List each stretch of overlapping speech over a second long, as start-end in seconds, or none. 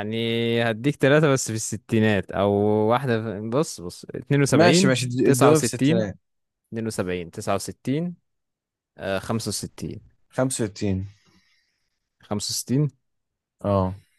4.5-6.1